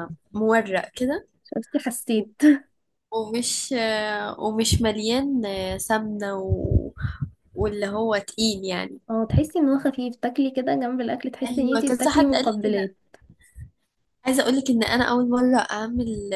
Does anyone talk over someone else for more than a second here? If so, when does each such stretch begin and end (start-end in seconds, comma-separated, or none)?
11.4-12.9